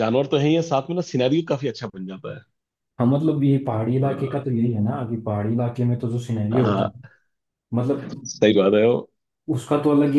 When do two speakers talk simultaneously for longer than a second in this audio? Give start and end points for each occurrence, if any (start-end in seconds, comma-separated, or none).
none